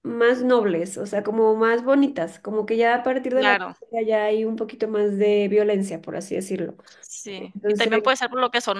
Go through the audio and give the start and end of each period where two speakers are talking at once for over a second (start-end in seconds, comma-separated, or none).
none